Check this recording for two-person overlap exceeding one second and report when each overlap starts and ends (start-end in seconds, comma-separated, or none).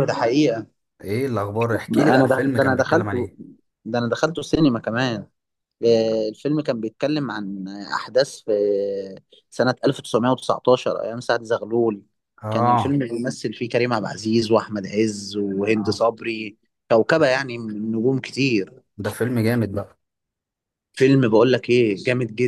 1.9-3.3